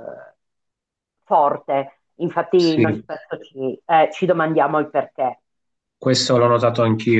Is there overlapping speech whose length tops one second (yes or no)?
no